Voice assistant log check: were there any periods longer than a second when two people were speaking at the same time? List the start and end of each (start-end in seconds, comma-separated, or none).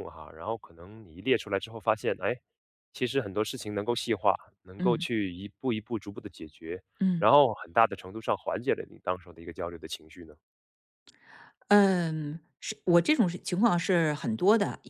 none